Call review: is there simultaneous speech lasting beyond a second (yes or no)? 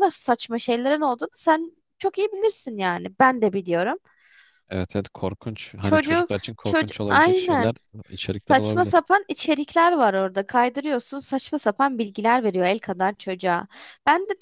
yes